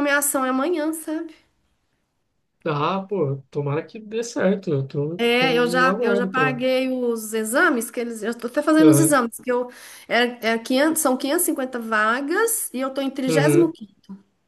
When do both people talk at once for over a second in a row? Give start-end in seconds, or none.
5.2-6.6